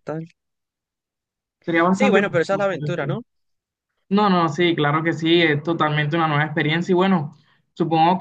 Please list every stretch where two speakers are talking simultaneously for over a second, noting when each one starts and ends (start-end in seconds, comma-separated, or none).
1.9-3.2